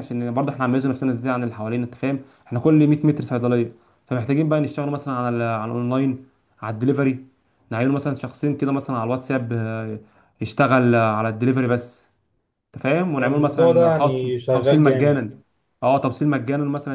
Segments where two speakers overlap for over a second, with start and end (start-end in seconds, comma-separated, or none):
13.2-15.2